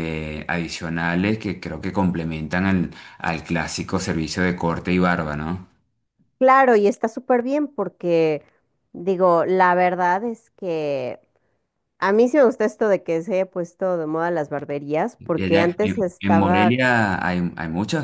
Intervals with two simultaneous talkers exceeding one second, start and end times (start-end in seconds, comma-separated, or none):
15.2-16.8